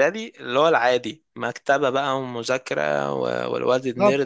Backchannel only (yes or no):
no